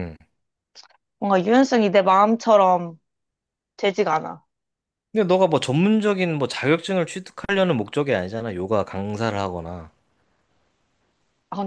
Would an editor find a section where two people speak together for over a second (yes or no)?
no